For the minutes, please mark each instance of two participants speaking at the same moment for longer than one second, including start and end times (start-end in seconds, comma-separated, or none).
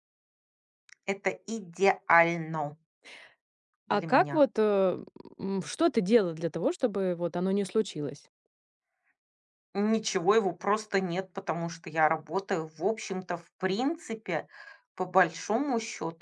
none